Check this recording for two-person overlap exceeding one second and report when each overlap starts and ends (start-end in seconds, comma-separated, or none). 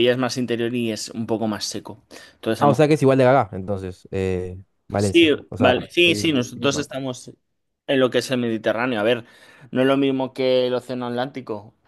5.0-6.9